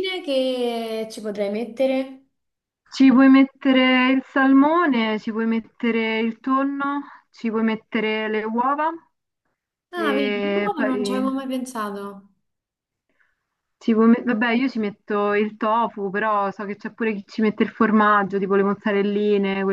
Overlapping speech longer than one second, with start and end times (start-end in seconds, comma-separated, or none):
10.0-11.2